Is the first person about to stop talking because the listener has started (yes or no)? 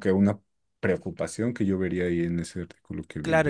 yes